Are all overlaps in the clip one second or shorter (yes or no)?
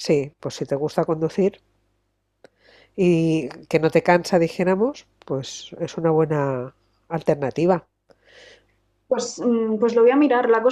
yes